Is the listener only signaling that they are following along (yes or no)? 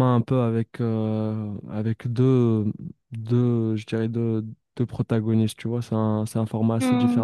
yes